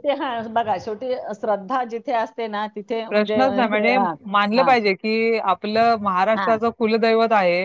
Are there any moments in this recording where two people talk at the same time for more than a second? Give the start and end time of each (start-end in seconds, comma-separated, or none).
none